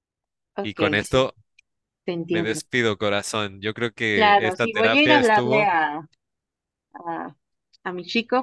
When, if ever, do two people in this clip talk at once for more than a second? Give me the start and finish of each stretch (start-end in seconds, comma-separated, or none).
4.1-5.7